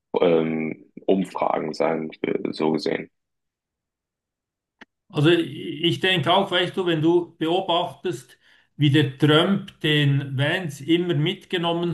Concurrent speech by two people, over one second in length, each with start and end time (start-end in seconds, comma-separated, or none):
none